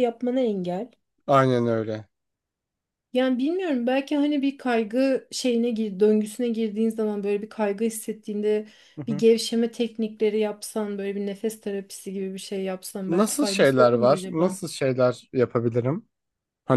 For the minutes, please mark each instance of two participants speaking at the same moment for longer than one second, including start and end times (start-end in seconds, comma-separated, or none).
13.1-14.6